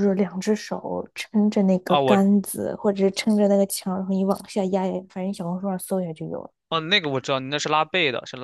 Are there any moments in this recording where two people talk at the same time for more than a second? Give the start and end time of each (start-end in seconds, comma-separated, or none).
none